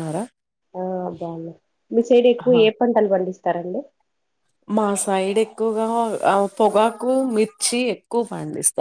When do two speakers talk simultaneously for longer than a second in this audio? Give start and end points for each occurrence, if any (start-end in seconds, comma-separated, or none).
none